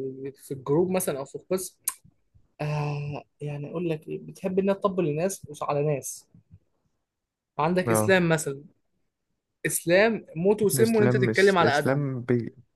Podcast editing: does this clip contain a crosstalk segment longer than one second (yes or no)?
yes